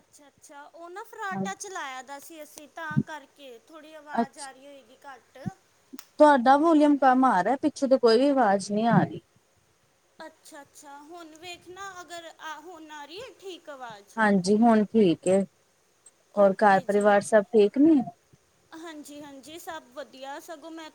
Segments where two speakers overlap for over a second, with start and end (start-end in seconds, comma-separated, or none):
none